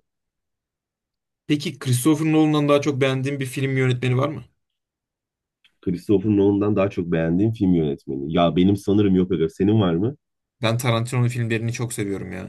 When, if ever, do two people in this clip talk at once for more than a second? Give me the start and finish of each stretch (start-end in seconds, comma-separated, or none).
none